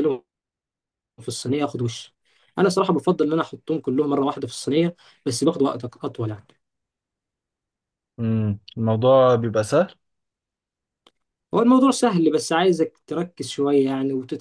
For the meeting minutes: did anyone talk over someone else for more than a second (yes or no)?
no